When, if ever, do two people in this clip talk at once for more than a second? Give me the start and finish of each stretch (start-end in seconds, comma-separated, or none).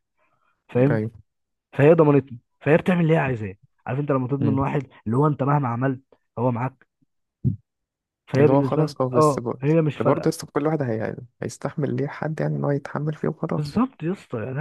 8.4-10.3